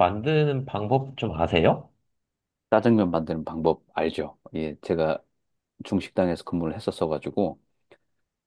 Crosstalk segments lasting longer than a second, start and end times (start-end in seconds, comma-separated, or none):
none